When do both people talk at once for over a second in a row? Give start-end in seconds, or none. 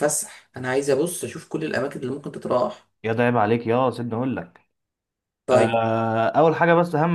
none